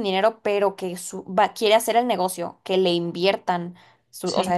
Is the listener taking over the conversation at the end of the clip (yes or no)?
no